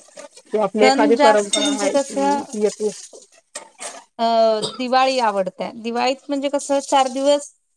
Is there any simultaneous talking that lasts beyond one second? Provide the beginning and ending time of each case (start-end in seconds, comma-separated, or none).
0.8-2.4